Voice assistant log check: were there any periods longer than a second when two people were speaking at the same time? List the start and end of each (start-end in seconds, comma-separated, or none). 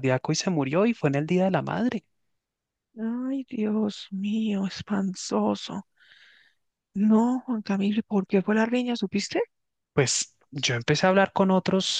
none